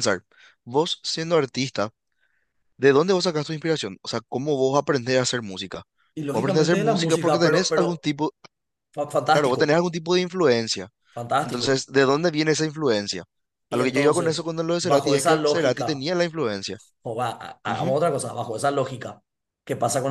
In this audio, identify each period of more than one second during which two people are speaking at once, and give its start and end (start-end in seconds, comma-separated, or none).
6.3-8.1, 13.7-16.1